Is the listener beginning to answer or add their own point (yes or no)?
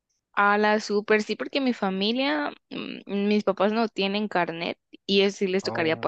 no